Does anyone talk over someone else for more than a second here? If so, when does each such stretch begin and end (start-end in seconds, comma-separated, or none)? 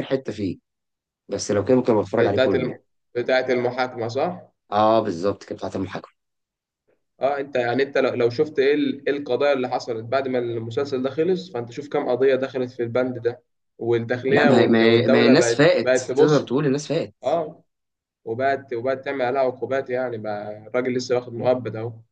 14.3-16.5